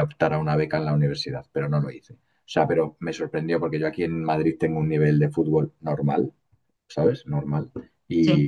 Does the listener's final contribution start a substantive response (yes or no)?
no